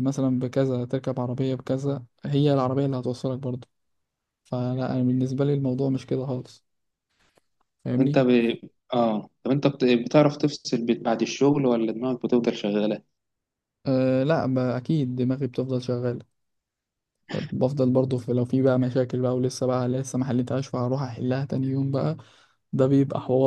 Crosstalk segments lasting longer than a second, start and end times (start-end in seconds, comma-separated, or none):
none